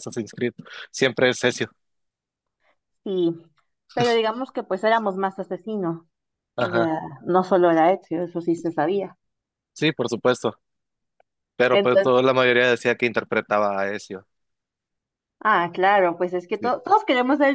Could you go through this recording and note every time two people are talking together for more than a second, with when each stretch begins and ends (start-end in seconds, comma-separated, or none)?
none